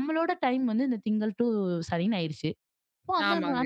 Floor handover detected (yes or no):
no